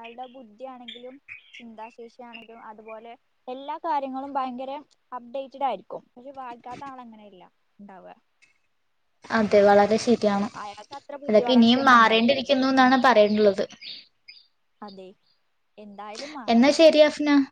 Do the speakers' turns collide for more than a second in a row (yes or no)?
yes